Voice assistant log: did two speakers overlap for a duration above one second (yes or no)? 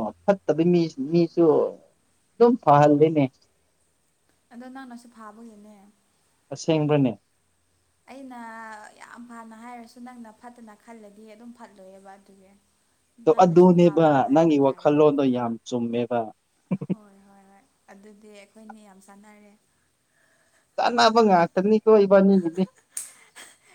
yes